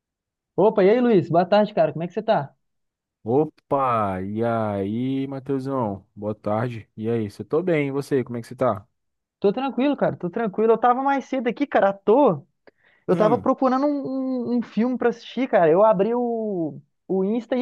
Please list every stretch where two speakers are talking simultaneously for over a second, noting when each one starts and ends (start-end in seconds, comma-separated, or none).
none